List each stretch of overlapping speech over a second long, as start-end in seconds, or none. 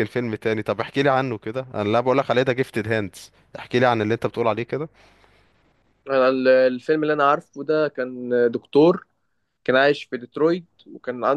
none